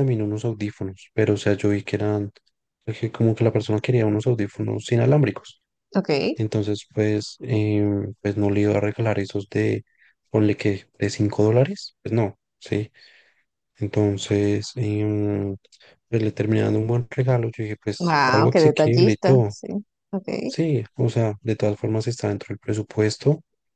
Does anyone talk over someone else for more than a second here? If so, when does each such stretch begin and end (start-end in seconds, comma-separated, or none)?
18.0-19.5